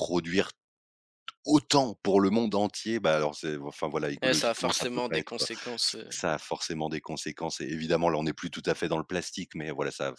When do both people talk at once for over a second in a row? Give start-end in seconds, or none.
4.2-5.5